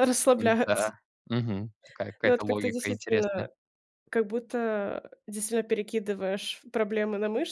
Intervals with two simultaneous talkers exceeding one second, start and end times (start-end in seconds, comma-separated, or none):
2.2-3.5